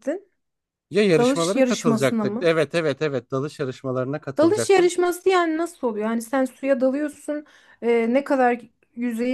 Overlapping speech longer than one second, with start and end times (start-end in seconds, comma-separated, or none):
1.2-2.5